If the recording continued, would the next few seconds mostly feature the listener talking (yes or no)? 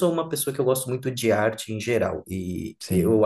no